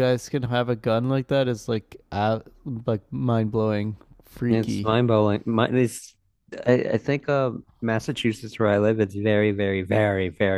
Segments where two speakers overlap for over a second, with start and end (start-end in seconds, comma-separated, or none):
none